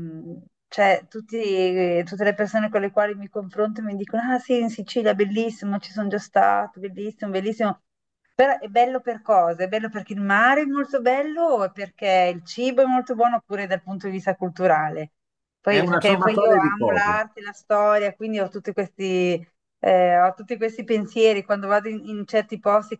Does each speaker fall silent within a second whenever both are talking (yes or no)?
no